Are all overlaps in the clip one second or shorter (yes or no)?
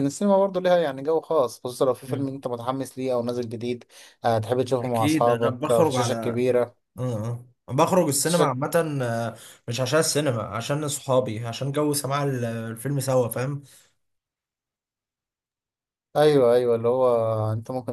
no